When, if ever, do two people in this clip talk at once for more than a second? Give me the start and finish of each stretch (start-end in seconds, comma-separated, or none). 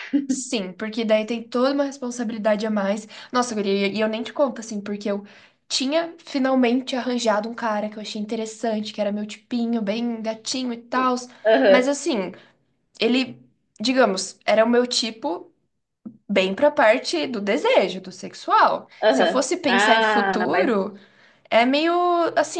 19.0-20.7